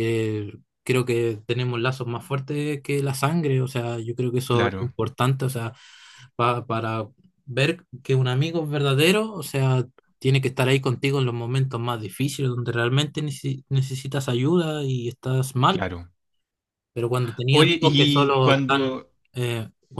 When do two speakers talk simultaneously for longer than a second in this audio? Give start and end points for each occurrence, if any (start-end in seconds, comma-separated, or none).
17.5-19.1